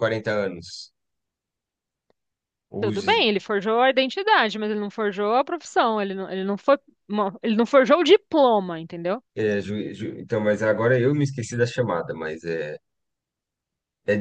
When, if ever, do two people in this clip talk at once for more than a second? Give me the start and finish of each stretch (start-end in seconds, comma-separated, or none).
none